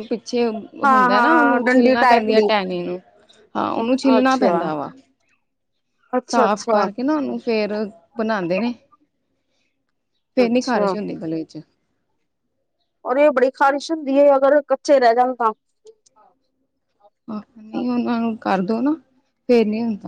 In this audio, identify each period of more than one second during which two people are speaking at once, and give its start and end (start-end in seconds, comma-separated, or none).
0.8-2.5